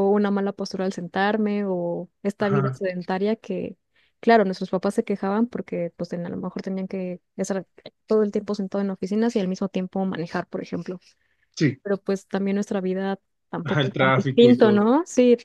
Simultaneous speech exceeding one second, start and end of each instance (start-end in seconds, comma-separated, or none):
13.6-14.8